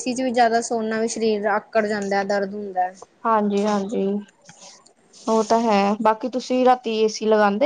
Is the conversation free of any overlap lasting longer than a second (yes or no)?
yes